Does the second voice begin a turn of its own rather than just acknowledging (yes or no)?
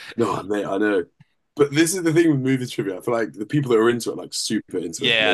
yes